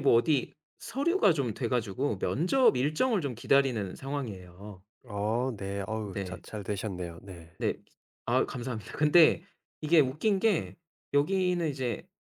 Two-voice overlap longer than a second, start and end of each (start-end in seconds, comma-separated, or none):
none